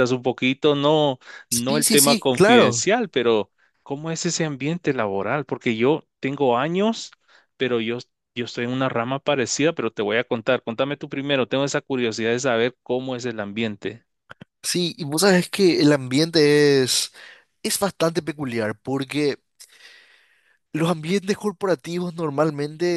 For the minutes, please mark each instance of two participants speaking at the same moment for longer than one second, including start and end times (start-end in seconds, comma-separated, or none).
1.5-2.9